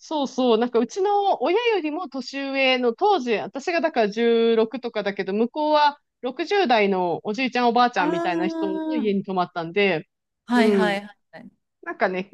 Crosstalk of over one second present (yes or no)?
yes